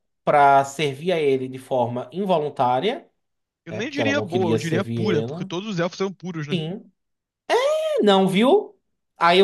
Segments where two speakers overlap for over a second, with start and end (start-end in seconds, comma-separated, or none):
3.7-5.5